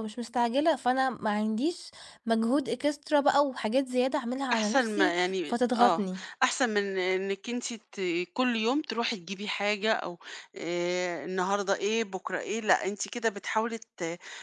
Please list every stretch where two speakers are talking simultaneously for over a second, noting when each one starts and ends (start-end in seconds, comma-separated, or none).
4.5-6.0